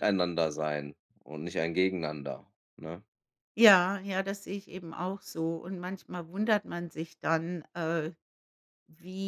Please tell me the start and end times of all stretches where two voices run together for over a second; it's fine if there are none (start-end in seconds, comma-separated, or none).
none